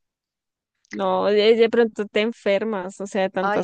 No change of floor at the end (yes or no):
no